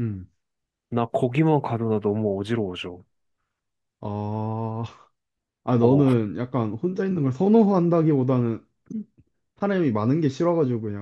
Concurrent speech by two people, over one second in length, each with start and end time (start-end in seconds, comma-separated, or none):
none